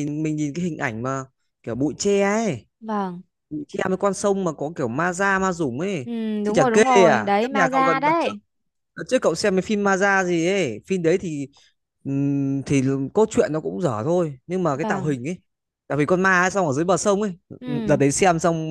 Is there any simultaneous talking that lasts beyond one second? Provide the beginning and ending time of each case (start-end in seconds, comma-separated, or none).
6.0-8.3